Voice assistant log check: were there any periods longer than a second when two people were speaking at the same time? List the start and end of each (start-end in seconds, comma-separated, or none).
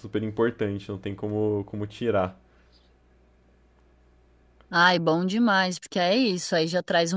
none